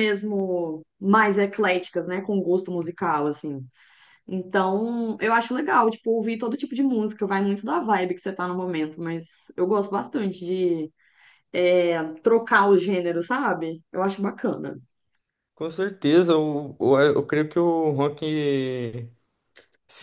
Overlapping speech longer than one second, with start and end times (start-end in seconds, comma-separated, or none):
none